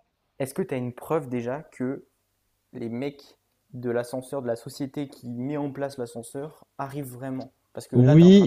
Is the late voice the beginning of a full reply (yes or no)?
yes